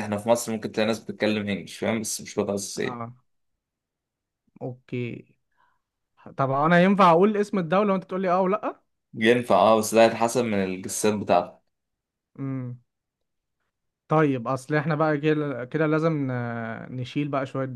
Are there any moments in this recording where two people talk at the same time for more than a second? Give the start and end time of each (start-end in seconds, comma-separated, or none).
none